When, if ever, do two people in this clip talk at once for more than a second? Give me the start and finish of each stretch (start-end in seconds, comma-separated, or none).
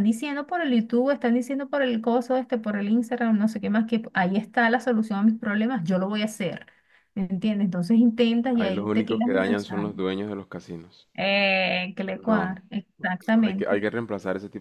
8.5-9.9